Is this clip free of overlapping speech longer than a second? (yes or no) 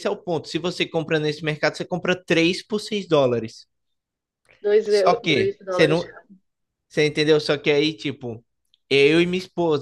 no